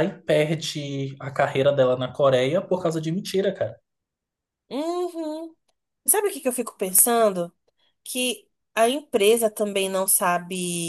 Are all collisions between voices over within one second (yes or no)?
yes